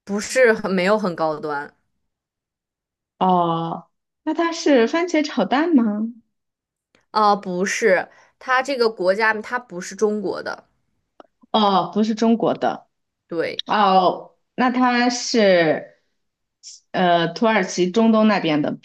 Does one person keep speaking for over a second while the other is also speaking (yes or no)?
no